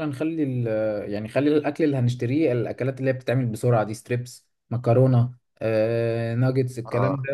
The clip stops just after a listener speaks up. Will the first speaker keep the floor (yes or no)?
yes